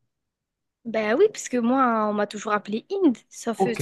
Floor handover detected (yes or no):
yes